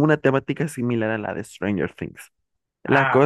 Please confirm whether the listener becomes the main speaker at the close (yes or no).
no